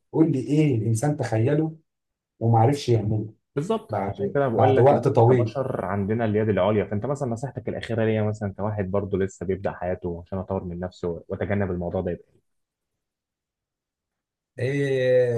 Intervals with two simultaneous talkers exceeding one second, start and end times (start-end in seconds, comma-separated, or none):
3.9-5.5